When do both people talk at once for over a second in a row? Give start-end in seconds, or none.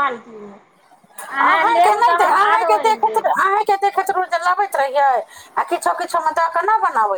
1.5-3.3